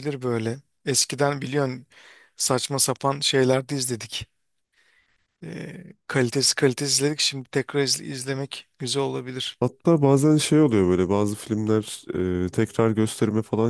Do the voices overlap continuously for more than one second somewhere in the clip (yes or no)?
no